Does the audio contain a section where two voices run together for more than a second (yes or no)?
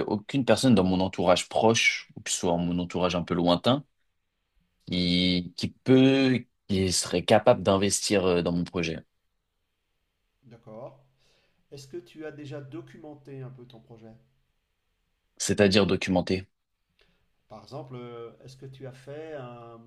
no